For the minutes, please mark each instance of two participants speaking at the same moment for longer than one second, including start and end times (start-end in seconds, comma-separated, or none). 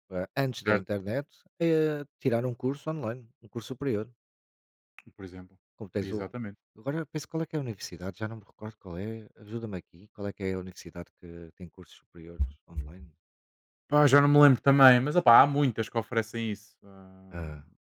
none